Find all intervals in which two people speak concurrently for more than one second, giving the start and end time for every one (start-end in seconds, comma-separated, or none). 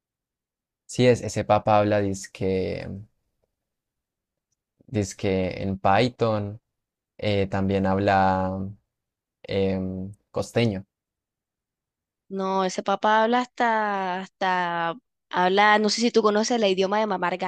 none